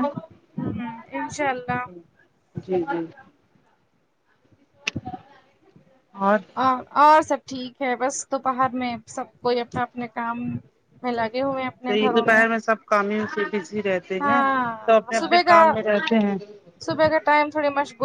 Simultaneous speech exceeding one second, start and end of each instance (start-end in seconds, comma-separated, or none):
14.2-15.6